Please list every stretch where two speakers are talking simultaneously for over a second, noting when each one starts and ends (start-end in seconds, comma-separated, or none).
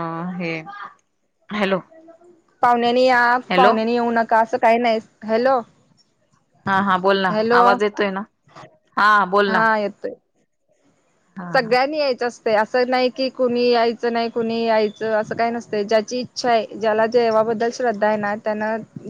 none